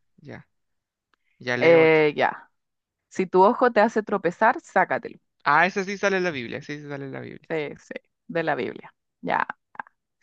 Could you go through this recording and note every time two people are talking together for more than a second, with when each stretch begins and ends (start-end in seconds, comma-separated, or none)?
none